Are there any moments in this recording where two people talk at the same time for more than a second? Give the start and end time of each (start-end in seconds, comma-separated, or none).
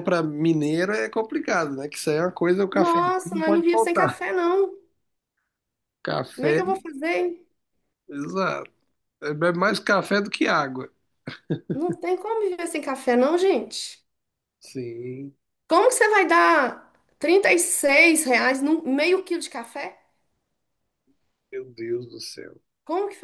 2.7-4.2